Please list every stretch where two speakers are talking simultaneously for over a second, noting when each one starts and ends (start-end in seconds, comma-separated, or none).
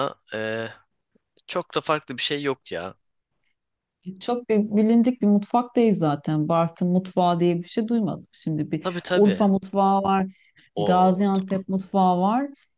none